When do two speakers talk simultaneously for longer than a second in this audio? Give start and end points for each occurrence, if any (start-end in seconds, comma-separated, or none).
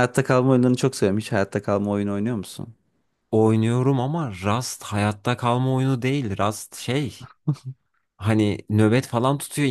none